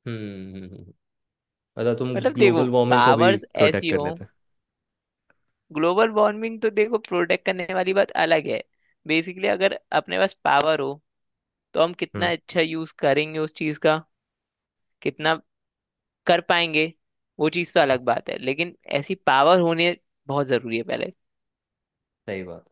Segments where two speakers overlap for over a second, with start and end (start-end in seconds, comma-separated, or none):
2.1-4.1